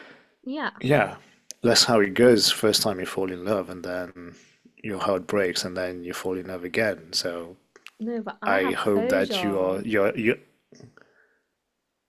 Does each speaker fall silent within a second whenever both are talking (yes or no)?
no